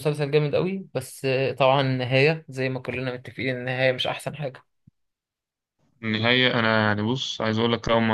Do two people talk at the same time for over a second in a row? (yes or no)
no